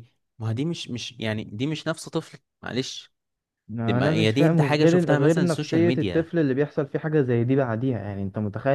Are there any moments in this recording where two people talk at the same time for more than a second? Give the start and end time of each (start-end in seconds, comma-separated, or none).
3.9-6.3